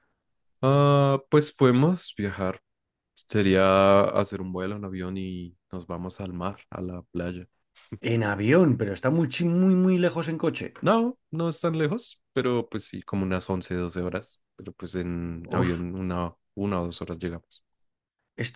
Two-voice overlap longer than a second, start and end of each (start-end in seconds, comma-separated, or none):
none